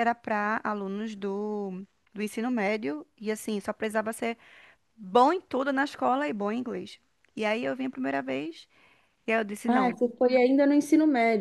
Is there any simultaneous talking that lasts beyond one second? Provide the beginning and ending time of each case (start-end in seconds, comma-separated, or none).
none